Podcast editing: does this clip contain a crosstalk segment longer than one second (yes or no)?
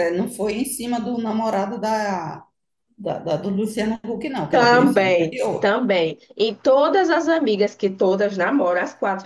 yes